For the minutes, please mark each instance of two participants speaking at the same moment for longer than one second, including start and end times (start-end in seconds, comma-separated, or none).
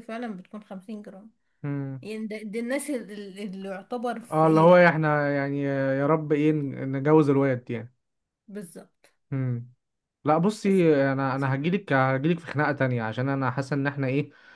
none